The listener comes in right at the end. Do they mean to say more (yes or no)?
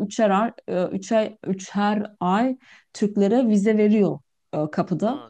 no